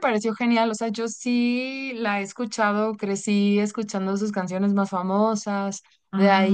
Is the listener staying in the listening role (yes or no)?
yes